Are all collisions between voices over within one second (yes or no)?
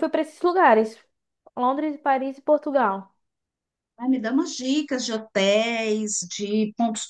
yes